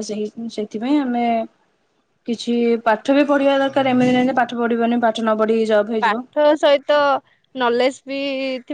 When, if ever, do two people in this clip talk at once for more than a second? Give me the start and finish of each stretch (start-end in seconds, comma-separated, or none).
none